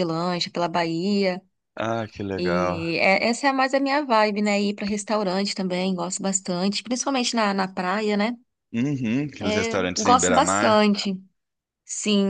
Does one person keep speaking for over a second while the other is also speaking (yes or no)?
yes